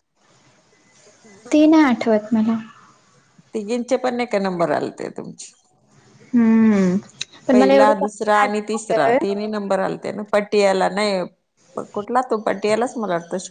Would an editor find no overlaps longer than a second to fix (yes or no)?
no